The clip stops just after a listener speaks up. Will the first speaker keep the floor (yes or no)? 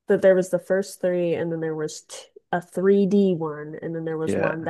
yes